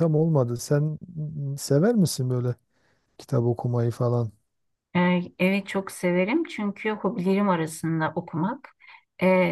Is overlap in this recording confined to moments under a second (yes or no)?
yes